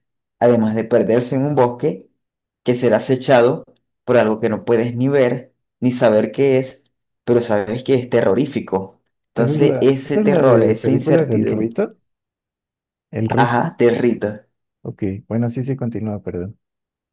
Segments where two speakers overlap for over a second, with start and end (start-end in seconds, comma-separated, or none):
9.4-11.7